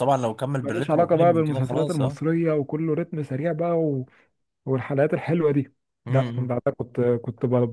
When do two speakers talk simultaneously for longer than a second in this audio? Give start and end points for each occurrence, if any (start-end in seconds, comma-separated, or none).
0.6-2.2